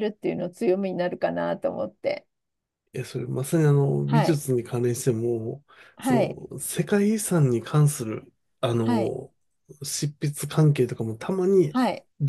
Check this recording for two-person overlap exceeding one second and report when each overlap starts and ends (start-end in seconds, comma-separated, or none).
none